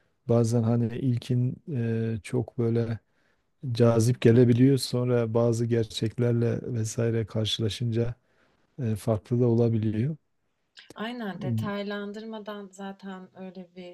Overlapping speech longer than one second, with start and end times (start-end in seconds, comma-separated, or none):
none